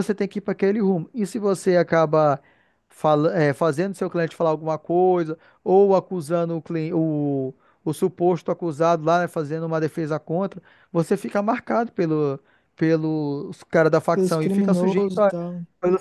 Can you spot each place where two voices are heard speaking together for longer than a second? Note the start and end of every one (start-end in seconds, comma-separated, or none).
14.1-15.3